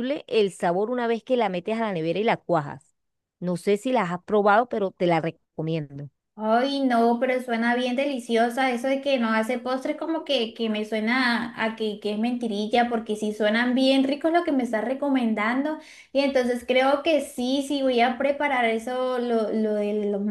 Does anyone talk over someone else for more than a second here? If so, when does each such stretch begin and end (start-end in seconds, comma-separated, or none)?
none